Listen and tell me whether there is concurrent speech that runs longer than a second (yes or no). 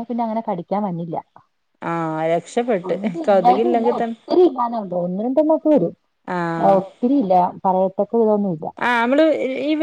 no